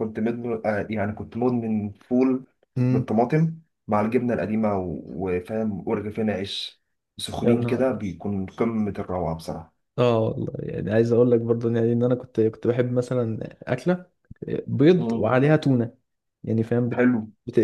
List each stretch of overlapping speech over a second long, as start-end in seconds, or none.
none